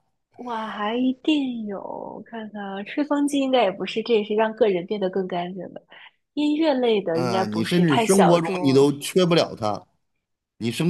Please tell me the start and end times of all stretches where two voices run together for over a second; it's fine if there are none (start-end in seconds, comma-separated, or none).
7.1-8.9